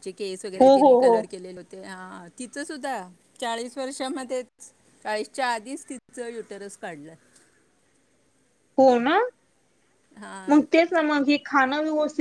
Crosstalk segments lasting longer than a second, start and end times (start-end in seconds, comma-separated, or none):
none